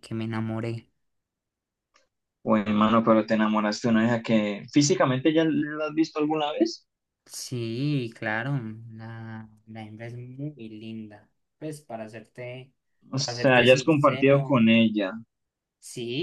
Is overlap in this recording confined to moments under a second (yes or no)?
no